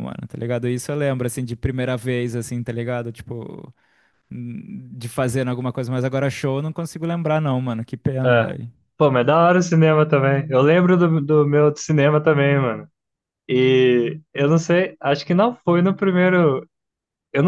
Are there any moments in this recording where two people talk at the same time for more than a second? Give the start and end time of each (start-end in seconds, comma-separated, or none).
none